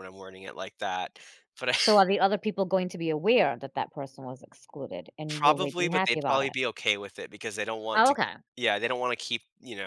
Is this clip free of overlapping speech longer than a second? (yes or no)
no